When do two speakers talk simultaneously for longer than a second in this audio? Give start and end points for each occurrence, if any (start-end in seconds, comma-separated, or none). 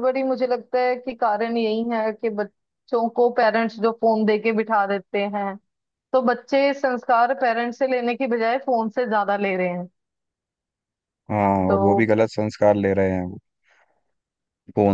none